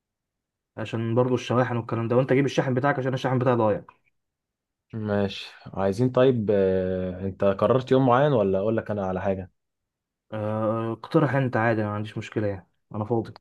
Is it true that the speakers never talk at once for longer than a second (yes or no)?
yes